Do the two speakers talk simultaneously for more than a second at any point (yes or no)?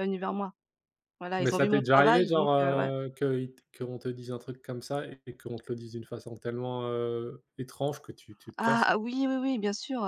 yes